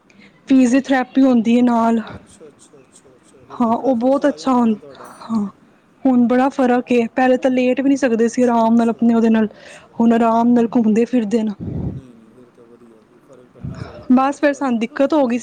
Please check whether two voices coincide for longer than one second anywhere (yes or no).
yes